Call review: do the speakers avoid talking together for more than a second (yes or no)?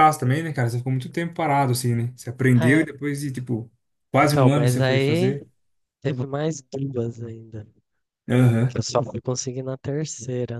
no